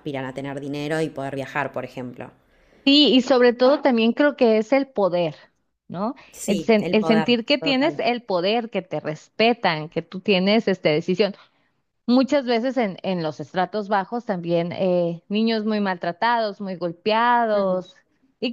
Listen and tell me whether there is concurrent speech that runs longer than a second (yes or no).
yes